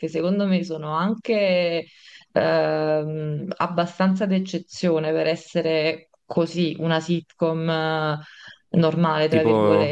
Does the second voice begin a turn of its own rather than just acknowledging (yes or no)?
yes